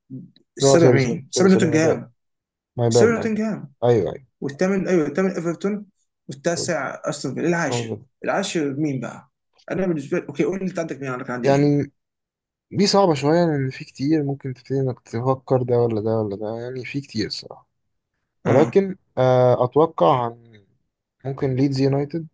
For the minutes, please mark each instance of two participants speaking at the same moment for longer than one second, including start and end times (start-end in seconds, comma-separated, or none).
0.6-2.0